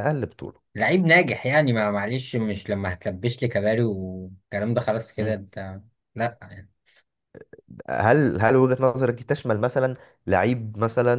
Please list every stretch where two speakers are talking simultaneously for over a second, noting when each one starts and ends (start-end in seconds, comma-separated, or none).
none